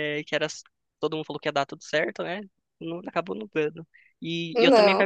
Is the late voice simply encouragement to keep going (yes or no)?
yes